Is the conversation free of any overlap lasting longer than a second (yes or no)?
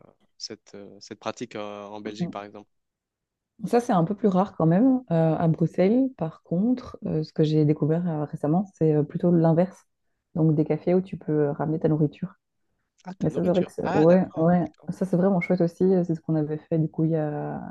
no